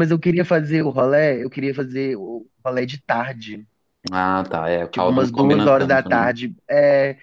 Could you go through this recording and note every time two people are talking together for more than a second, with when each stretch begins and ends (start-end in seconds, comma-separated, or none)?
4.9-6.3